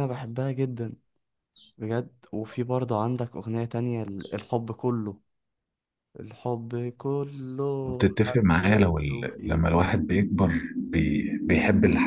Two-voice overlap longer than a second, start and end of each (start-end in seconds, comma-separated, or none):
7.8-9.6